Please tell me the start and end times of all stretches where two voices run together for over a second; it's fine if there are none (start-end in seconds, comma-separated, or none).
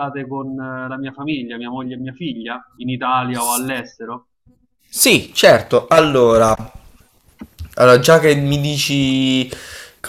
none